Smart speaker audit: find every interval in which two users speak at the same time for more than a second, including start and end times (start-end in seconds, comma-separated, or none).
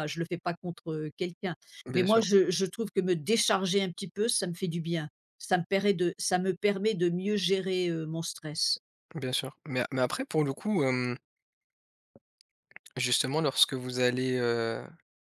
none